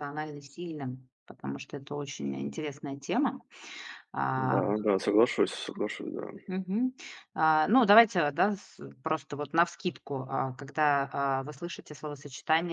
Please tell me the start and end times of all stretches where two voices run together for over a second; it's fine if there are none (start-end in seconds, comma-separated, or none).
none